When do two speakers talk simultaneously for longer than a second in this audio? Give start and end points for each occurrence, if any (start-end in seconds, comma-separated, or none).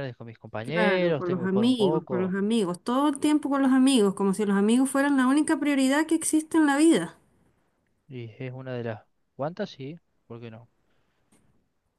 0.6-2.4